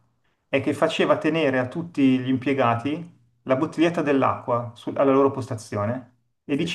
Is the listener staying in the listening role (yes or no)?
yes